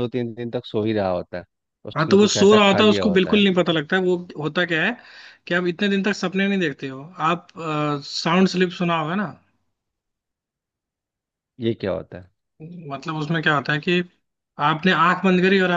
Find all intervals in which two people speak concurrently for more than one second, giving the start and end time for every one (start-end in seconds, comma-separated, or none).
1.9-3.4